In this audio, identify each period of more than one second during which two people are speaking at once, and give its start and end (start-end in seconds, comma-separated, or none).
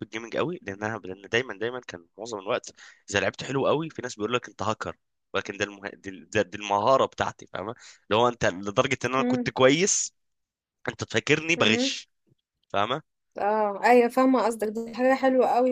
none